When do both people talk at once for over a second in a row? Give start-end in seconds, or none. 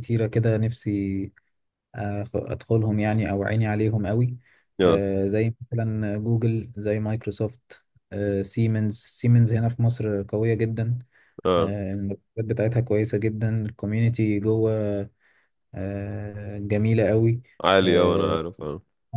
none